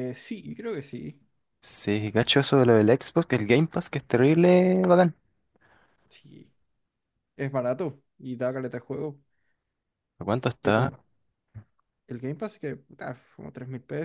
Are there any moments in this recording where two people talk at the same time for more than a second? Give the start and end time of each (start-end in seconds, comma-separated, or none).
none